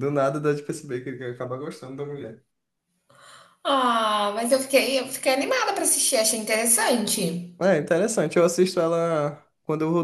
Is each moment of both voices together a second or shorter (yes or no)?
yes